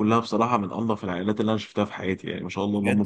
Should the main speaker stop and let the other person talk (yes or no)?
yes